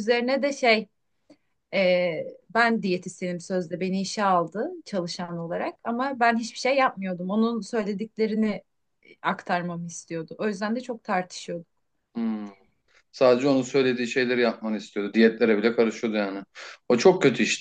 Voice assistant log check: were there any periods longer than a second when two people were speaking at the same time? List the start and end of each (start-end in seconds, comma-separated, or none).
none